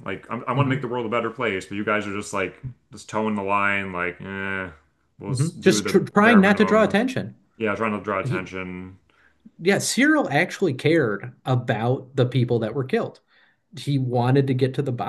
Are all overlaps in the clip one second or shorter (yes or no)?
no